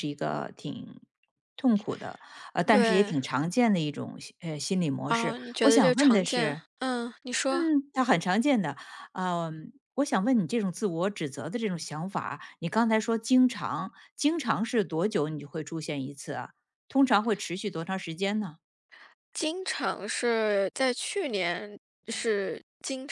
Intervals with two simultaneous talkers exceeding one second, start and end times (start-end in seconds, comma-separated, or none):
5.0-6.6